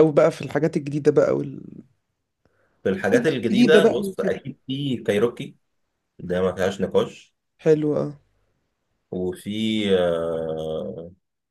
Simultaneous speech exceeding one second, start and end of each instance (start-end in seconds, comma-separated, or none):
3.0-4.4